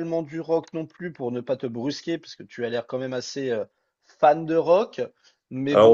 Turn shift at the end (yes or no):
yes